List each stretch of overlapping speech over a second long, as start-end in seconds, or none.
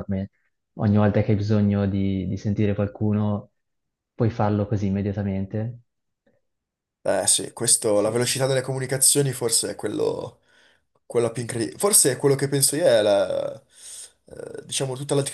none